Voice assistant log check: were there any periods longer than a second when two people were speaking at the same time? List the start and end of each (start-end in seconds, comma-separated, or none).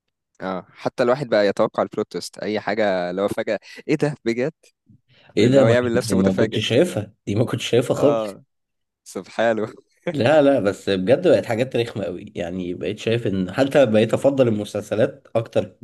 5.4-6.6